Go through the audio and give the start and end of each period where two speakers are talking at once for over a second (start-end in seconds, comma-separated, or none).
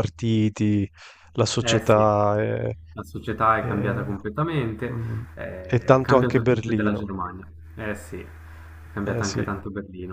5.7-7.0